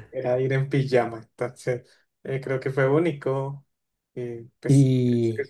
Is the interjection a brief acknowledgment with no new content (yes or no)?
no